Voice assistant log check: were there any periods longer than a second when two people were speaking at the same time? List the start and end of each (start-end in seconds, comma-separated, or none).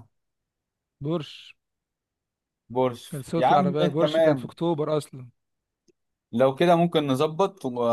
3.1-4.5